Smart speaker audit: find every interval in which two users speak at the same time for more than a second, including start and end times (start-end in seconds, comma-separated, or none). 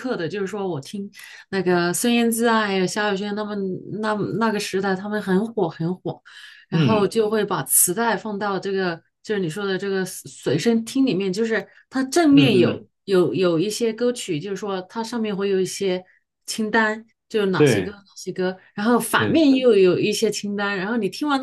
none